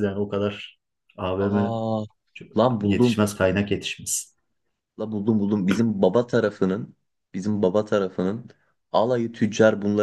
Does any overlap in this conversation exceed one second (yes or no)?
no